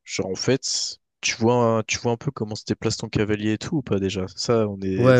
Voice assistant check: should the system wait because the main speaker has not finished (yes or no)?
no